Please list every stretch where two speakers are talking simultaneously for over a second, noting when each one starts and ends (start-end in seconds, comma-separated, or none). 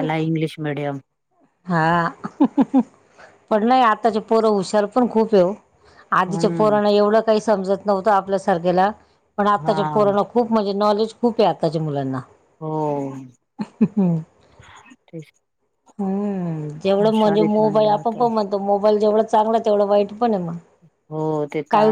17.0-18.2